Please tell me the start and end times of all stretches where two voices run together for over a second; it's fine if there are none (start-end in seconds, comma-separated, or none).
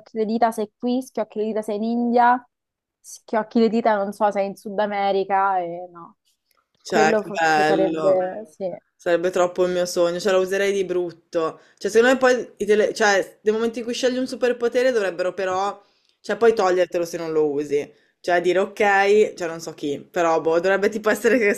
6.9-8.2